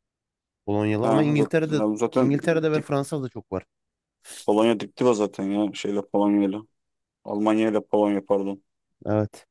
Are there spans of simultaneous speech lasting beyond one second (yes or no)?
yes